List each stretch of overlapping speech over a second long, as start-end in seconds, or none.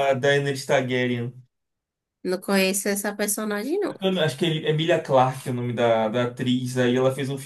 none